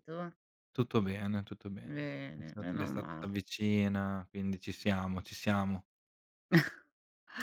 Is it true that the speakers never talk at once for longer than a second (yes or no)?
no